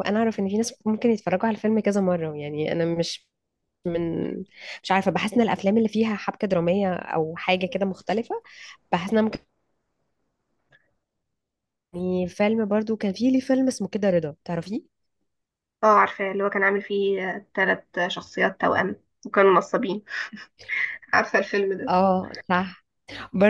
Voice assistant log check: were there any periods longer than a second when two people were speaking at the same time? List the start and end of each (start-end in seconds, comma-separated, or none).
none